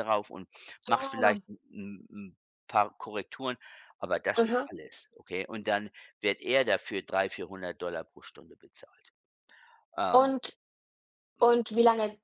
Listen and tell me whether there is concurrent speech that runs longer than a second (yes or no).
no